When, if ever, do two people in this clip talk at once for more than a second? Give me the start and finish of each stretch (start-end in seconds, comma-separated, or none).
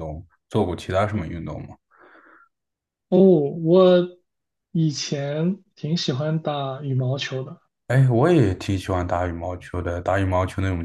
none